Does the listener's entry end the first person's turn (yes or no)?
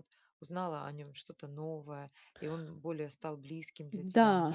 yes